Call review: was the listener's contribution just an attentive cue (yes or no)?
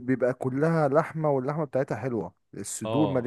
no